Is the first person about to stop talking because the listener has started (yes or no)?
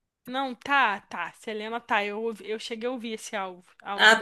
no